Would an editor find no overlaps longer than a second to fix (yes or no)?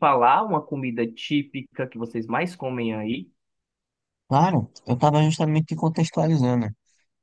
yes